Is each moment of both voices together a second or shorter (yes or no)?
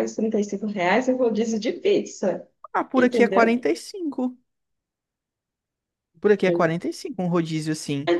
yes